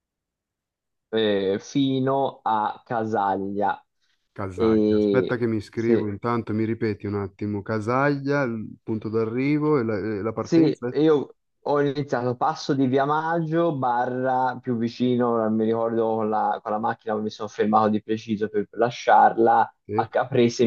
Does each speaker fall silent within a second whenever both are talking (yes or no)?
no